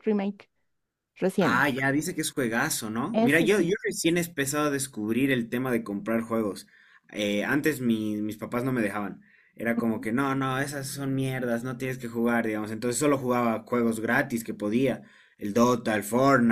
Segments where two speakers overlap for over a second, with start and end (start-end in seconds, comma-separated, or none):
none